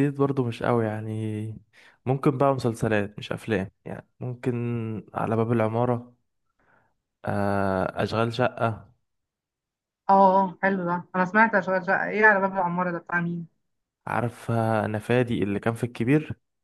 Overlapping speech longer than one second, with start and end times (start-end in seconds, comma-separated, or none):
none